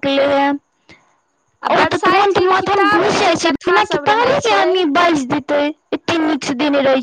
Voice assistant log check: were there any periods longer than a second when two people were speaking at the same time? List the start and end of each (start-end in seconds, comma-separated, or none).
1.7-4.7